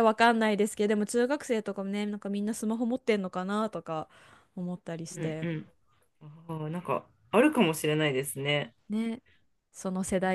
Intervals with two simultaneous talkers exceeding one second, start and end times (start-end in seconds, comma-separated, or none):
none